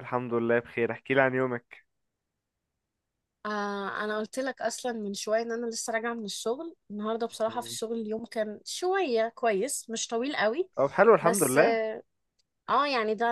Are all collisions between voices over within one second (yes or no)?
yes